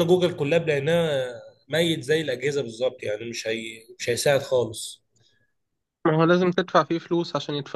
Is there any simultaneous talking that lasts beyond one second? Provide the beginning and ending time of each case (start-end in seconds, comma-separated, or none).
none